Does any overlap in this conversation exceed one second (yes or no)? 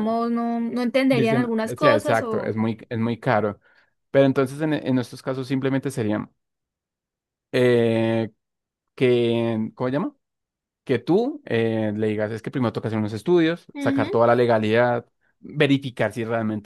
yes